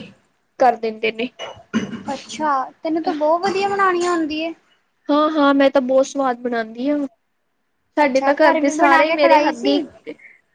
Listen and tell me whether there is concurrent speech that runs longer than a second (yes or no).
yes